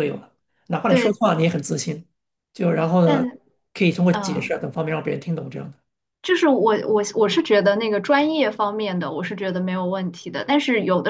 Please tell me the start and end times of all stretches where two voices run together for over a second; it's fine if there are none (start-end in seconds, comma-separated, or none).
none